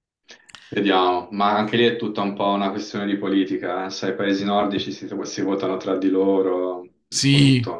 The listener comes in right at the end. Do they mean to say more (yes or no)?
yes